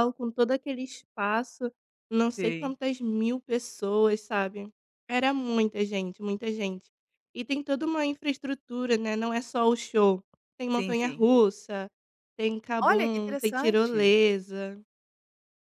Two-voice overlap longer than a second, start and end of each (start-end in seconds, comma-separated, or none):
12.8-14.1